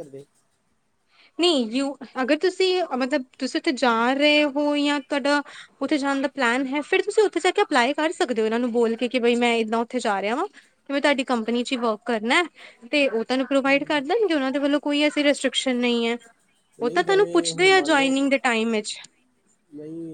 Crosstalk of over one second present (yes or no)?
yes